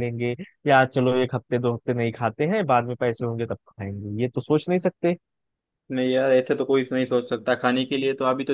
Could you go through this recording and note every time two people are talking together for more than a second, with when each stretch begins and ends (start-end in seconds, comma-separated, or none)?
none